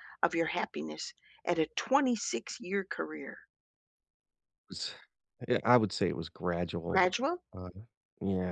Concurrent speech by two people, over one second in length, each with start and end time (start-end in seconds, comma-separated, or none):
none